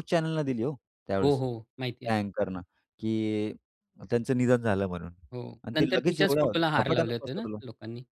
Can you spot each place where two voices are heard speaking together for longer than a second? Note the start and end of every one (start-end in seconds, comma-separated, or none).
5.6-7.5